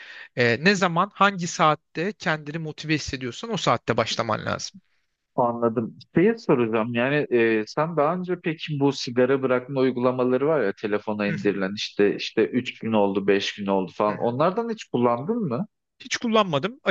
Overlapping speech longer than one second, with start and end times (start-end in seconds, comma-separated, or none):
none